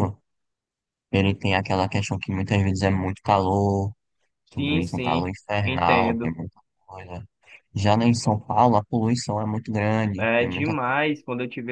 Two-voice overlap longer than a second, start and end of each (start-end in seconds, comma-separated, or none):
4.5-6.4